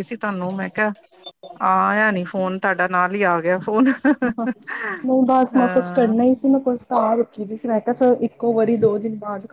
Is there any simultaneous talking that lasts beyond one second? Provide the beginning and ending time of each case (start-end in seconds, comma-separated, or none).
none